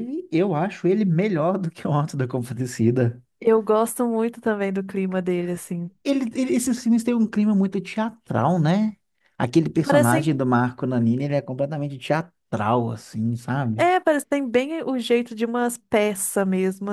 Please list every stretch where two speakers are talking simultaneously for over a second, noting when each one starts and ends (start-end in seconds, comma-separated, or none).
none